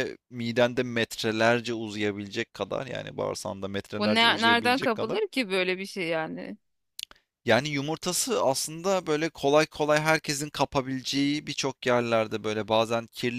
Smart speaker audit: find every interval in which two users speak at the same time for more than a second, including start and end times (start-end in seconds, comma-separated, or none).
4.0-5.2